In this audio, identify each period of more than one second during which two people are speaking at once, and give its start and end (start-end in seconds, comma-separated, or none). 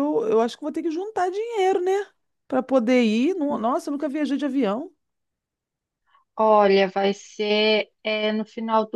none